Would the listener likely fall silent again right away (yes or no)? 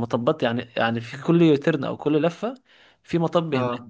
yes